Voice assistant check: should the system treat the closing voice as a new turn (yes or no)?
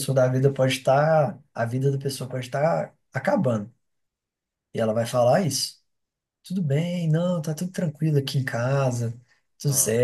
no